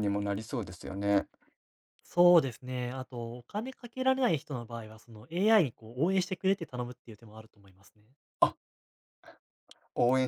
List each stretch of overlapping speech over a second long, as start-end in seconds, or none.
none